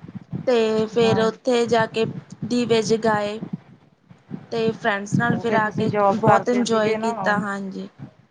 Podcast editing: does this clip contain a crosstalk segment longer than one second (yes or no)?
yes